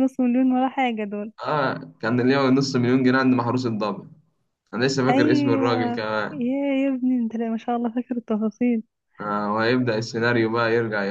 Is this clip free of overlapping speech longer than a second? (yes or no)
no